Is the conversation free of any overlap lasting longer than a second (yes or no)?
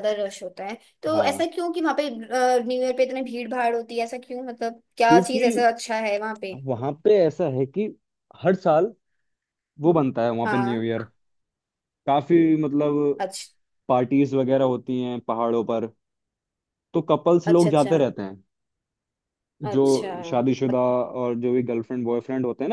yes